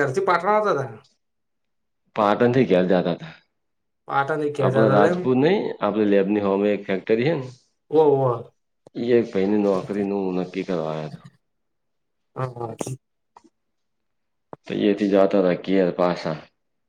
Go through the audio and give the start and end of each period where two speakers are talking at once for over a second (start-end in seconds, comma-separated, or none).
none